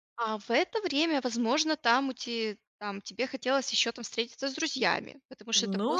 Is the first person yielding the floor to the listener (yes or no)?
yes